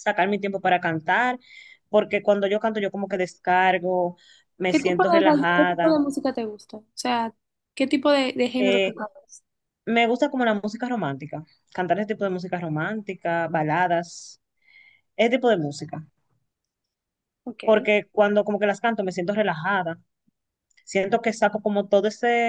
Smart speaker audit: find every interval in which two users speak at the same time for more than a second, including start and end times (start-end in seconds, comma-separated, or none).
4.7-6.0